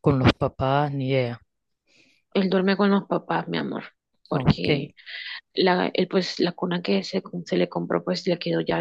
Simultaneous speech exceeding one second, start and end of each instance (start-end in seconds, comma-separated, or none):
none